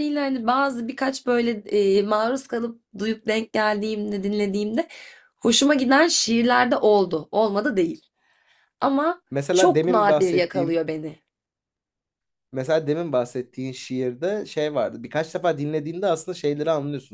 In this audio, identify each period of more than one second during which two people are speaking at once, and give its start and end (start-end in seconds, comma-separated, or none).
9.3-10.8